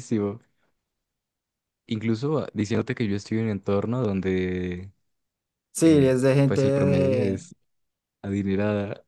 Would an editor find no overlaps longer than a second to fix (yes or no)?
no